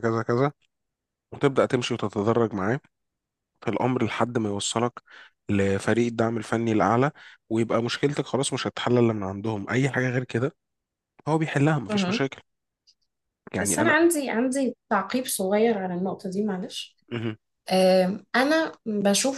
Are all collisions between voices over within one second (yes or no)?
yes